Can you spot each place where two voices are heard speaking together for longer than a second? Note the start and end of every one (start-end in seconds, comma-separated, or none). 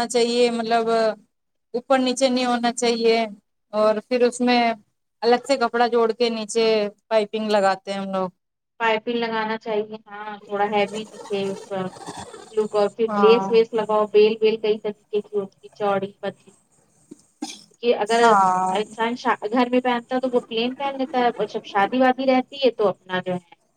none